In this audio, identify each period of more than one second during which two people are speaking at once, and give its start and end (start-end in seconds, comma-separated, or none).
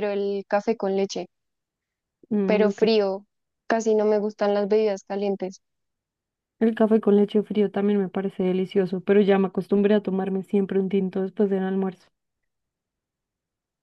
none